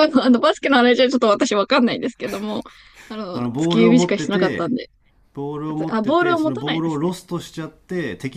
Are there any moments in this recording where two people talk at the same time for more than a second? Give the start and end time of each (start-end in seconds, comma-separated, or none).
3.3-4.7, 5.9-7.1